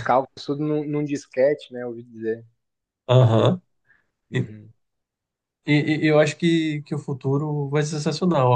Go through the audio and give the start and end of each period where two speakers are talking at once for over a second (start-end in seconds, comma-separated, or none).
none